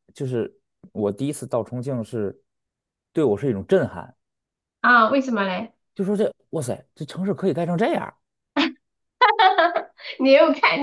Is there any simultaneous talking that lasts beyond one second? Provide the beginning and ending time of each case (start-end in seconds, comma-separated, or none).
none